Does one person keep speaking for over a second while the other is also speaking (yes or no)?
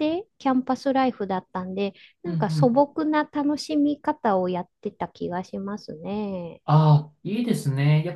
no